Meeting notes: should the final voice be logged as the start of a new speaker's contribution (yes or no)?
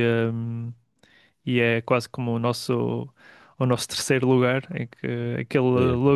no